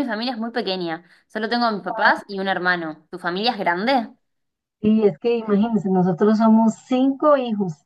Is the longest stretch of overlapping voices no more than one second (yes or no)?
yes